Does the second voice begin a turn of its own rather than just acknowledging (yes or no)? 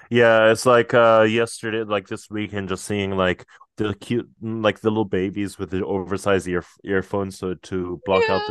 yes